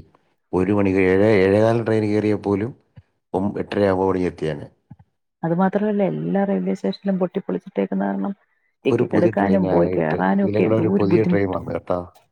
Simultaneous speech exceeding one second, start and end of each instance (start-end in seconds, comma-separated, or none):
8.9-11.6